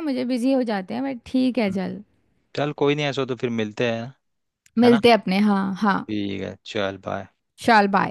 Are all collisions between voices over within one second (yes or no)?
yes